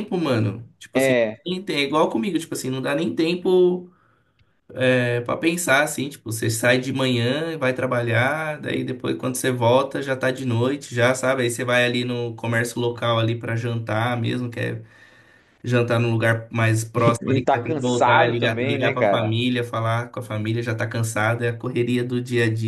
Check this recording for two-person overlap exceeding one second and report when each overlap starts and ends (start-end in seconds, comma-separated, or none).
17.2-19.3